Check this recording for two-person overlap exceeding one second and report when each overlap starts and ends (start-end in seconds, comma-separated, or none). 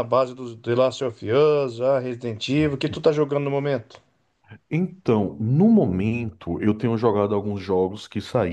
none